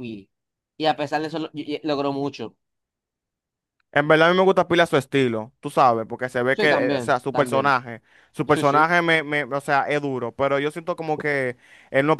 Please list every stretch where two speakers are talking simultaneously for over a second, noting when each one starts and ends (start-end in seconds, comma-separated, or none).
6.5-7.7